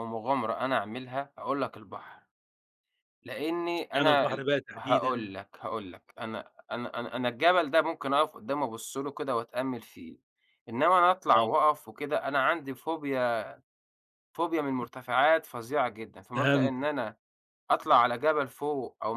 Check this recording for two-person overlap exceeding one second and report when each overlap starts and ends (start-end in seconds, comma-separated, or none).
3.8-5.3